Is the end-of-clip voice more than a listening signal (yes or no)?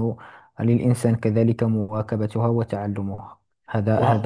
yes